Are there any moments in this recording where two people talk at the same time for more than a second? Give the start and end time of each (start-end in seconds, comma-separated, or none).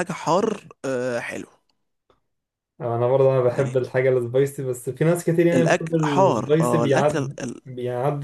5.5-7.6